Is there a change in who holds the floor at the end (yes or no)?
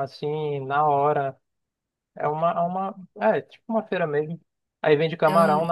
no